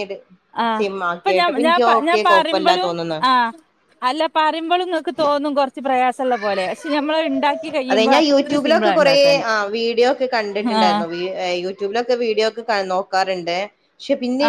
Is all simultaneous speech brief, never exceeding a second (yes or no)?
no